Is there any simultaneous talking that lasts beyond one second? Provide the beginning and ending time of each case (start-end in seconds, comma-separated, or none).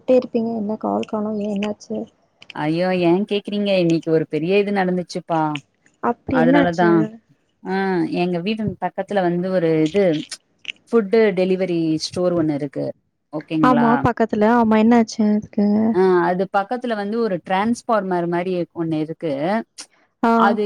none